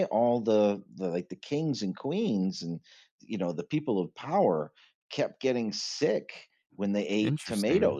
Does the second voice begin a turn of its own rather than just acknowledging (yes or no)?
no